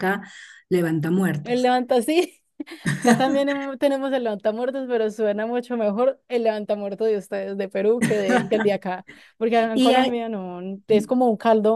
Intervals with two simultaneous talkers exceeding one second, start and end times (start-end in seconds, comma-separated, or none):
none